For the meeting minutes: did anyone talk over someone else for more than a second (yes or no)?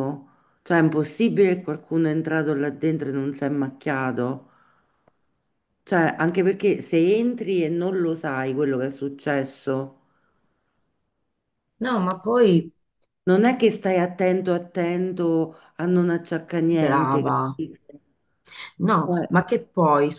no